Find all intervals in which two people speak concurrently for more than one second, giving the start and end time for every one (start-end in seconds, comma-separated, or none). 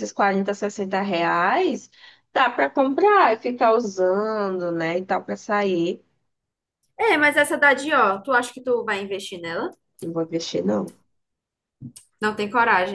none